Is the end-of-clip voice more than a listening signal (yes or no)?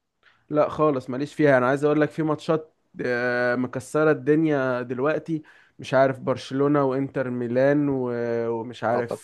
no